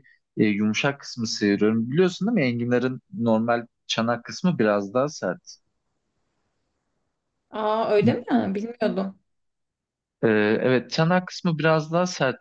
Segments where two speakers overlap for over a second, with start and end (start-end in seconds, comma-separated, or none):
none